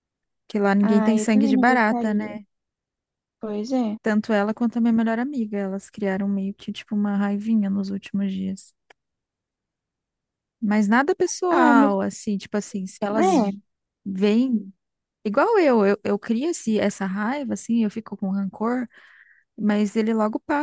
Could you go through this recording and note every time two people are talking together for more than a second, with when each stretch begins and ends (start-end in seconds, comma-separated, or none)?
0.8-2.4